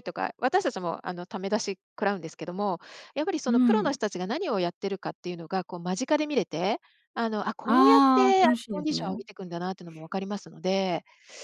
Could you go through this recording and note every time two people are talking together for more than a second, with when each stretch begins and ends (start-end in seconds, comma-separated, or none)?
7.6-9.2